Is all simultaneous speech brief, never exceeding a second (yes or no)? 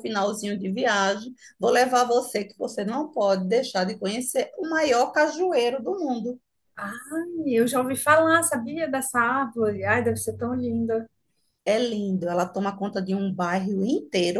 yes